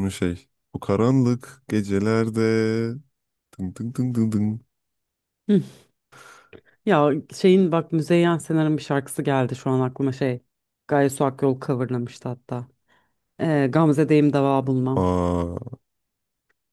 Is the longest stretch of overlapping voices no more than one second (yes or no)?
yes